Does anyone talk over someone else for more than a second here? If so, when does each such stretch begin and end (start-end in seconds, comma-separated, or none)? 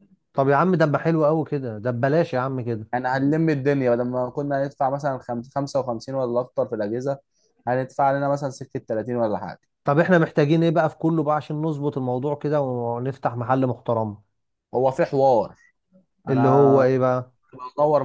none